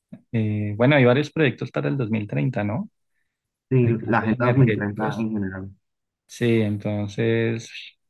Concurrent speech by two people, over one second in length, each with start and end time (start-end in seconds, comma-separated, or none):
3.8-5.2